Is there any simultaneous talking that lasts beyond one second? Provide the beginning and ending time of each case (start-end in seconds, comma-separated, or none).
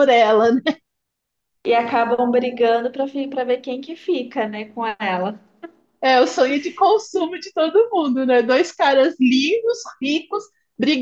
none